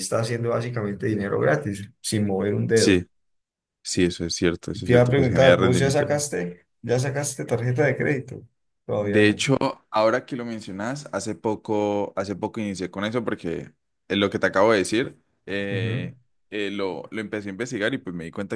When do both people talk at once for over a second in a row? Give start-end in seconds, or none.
4.7-6.0